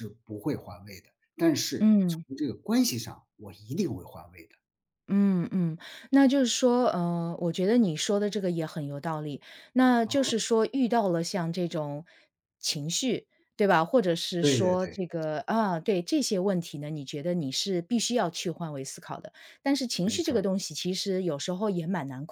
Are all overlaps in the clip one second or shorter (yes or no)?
yes